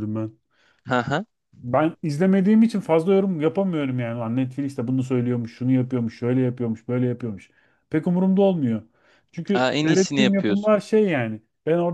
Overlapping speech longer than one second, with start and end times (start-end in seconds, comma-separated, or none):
9.5-10.8